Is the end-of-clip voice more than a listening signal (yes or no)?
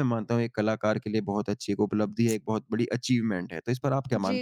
yes